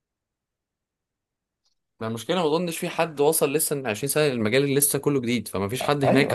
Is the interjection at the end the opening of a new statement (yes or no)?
no